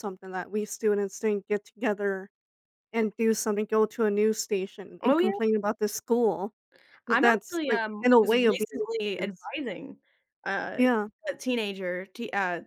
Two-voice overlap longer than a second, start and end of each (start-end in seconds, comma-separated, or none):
7.1-9.5